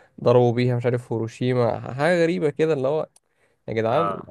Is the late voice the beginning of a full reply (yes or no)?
no